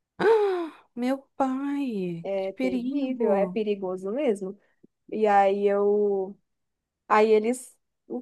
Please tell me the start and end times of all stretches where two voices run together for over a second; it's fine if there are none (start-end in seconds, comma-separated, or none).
2.2-3.6